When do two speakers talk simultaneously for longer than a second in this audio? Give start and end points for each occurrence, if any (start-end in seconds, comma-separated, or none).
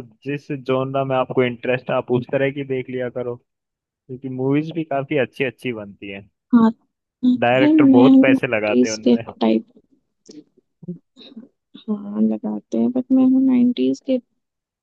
7.7-9.2